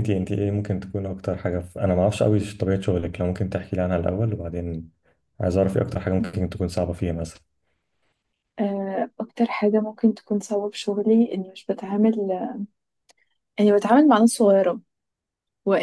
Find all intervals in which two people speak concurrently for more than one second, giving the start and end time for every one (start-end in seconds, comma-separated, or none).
none